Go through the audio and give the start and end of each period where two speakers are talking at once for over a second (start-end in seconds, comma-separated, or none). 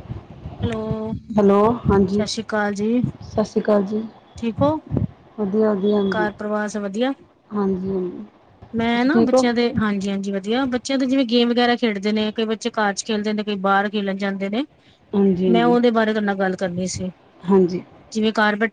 none